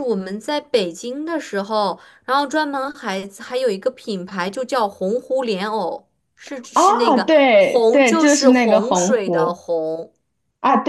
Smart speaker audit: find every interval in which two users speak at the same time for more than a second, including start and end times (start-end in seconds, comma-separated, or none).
6.7-9.6